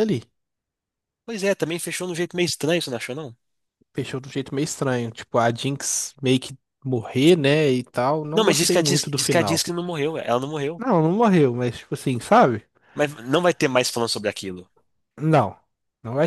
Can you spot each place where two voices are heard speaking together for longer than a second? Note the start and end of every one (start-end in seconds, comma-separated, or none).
8.3-9.7